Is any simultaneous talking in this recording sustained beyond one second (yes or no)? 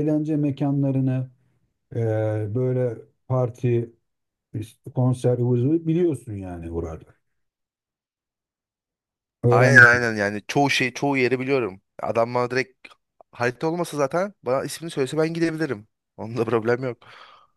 no